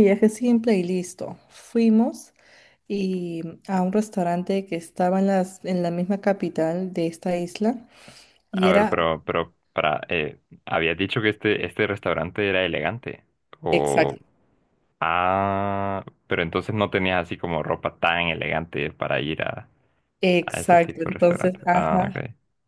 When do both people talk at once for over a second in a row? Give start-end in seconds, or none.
20.5-22.2